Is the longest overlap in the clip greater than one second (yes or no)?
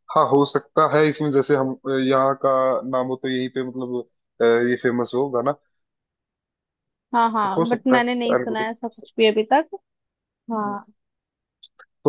yes